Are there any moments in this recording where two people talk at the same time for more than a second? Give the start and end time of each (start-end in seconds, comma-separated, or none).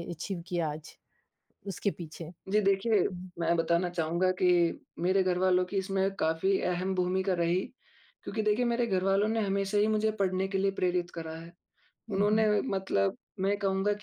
none